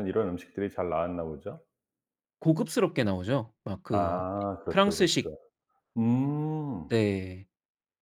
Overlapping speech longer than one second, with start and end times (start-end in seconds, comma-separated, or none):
3.9-5.3